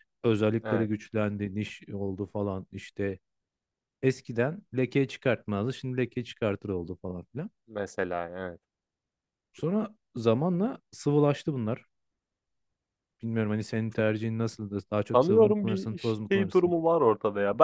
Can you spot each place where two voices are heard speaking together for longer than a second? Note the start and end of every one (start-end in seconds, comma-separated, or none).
15.1-16.7